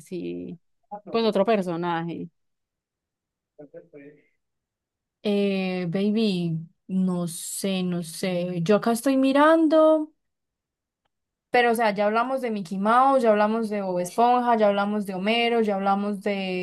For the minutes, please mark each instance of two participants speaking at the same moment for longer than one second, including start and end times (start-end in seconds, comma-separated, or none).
none